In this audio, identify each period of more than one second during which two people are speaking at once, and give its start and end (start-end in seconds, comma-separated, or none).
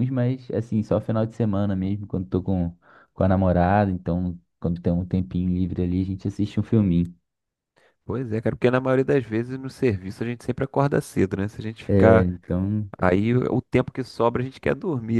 none